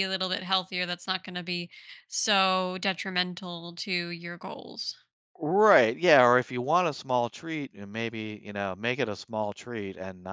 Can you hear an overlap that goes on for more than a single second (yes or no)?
no